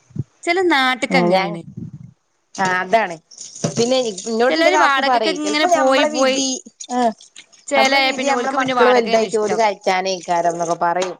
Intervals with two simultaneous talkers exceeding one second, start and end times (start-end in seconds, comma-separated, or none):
4.5-6.4, 7.8-9.6